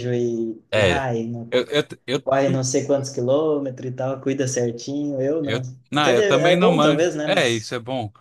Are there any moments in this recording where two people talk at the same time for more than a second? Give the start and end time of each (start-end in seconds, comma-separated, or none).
5.4-7.7